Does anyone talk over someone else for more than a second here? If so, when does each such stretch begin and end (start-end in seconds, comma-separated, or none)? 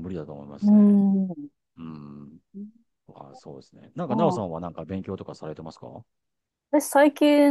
none